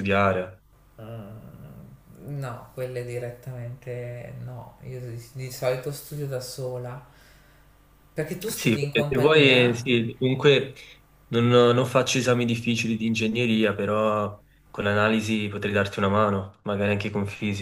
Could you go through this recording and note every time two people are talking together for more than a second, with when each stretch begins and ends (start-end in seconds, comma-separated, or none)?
8.5-9.9